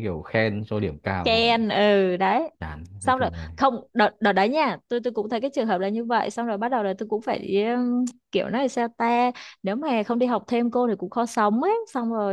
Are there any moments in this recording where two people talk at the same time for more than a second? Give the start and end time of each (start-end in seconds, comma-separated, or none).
none